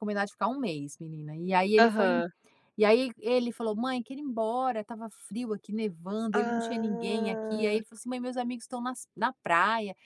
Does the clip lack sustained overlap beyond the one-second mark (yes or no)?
no